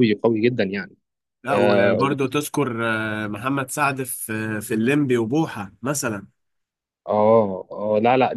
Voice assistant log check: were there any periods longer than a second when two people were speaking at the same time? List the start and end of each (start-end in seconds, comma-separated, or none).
none